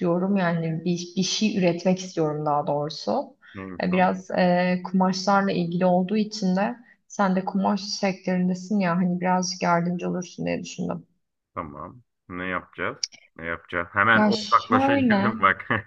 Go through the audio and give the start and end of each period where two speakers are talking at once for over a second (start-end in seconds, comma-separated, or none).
14.1-15.3